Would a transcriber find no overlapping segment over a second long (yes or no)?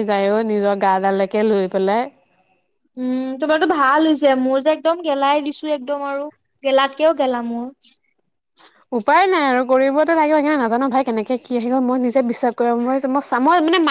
yes